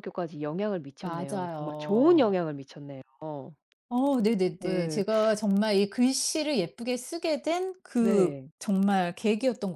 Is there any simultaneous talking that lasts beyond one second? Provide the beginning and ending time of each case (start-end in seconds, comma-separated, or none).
1.0-2.4